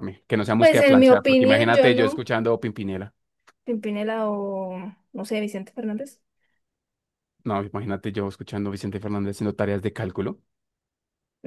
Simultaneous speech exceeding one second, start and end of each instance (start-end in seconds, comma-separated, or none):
0.6-2.2